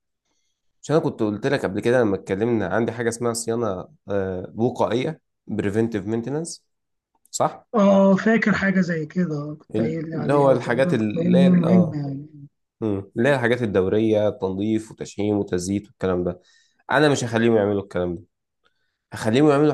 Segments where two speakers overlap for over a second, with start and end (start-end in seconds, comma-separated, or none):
9.8-12.0